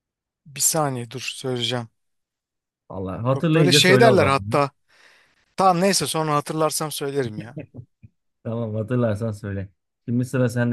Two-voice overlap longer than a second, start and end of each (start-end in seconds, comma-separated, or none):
3.3-4.6